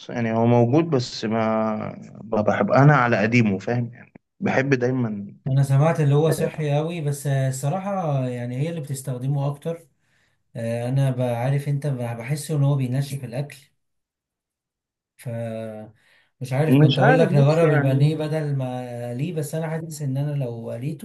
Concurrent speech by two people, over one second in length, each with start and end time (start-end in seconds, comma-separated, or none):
16.7-18.2